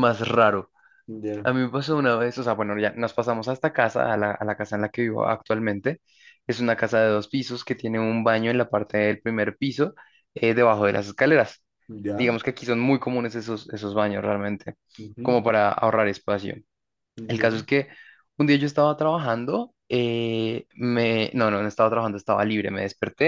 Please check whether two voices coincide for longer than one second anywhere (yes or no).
no